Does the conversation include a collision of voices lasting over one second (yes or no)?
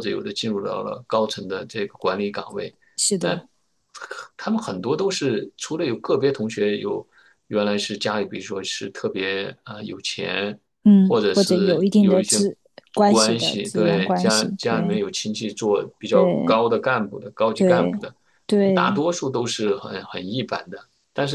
yes